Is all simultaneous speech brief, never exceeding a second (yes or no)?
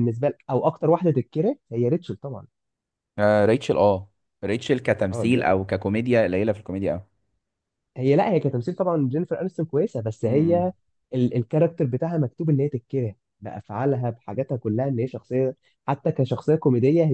yes